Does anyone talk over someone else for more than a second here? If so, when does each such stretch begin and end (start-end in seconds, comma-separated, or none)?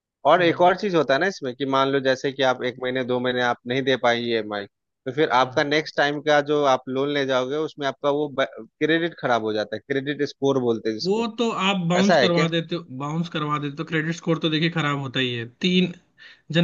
none